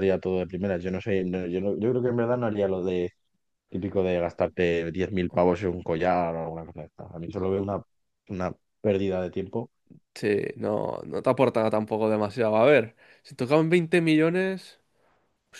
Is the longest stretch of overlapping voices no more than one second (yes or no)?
yes